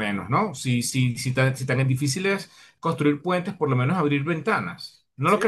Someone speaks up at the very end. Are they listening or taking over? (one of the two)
taking over